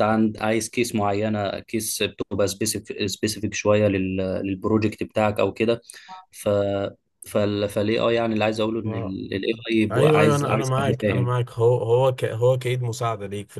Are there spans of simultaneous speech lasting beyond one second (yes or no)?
yes